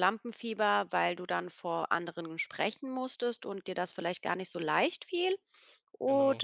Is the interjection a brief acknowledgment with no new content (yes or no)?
yes